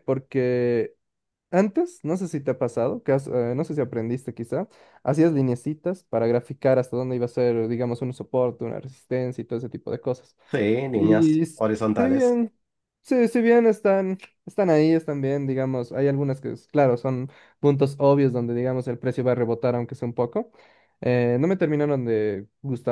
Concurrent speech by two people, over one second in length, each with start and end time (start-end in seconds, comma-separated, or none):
10.9-12.4